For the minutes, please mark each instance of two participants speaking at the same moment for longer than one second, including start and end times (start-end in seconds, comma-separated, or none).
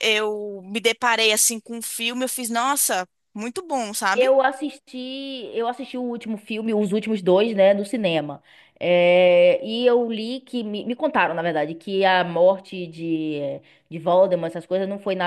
none